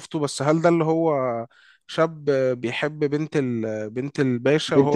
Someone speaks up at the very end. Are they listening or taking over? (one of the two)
taking over